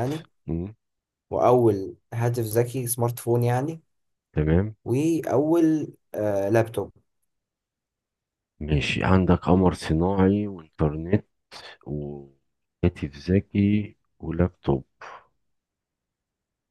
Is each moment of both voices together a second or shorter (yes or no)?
yes